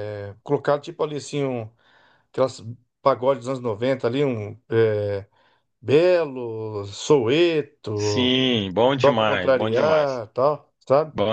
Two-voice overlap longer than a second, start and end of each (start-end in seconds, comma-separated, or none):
9.0-10.2